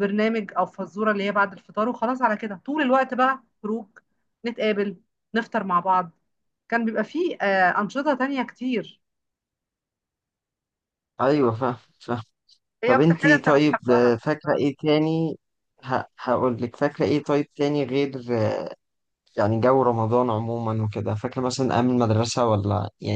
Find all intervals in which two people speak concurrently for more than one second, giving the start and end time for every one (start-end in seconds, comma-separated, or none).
12.8-14.1